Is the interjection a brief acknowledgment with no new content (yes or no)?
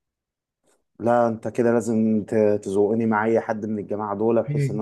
no